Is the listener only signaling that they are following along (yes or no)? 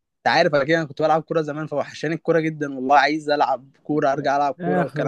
no